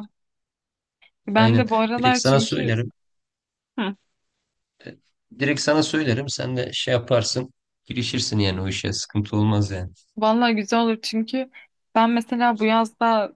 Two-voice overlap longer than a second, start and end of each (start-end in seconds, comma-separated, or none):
1.3-2.7